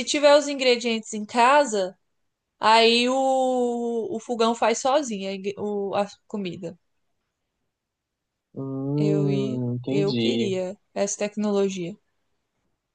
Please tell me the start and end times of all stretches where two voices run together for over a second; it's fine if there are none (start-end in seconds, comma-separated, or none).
9.0-10.5